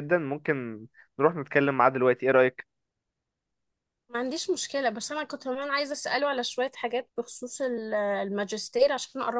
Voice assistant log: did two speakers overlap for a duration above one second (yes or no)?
no